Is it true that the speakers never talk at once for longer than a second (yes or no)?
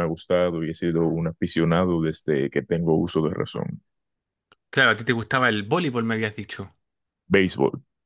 yes